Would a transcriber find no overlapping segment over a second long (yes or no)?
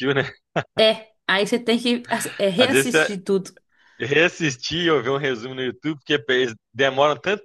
yes